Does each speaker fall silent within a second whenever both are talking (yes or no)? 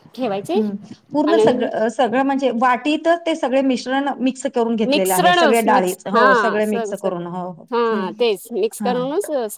no